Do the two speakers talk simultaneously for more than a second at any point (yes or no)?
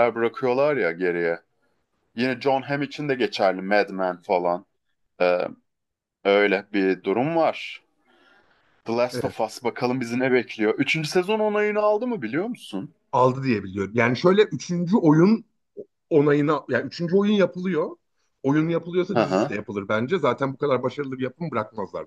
no